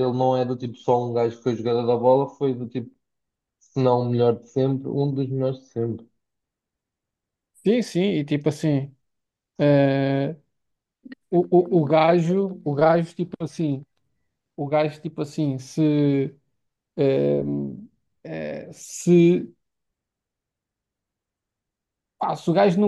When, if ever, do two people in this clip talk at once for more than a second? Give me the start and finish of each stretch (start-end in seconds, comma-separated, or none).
none